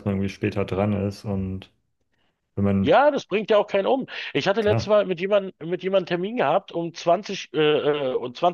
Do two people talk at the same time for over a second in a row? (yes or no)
no